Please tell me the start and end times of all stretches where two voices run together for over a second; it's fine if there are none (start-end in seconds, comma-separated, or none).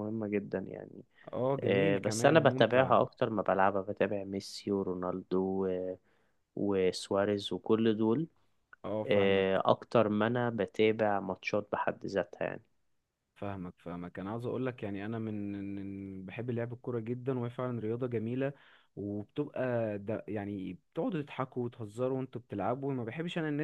1.6-2.9